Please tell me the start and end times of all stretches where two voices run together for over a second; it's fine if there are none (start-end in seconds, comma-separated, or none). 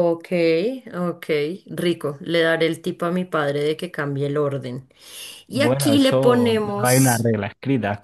5.5-7.3